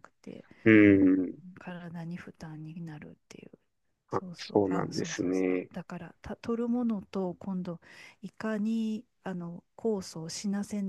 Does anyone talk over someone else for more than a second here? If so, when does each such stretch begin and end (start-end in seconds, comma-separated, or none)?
4.1-5.7